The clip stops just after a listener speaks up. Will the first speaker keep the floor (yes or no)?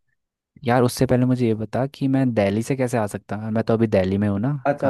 no